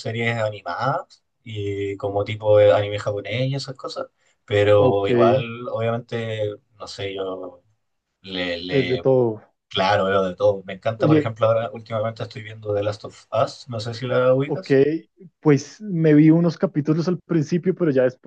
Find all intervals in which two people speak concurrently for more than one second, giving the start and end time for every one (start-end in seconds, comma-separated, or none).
none